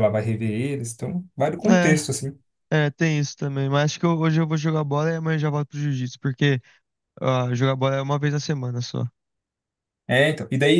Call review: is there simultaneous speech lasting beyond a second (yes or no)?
no